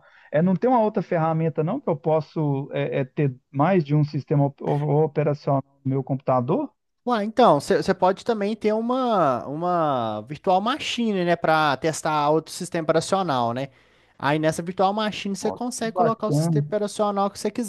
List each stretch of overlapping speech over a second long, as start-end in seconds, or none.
15.4-16.6